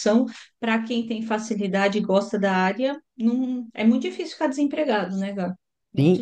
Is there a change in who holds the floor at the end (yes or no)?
yes